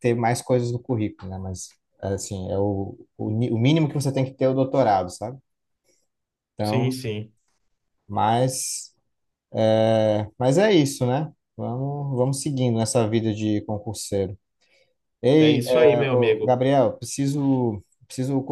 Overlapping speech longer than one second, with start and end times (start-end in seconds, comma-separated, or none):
15.4-16.6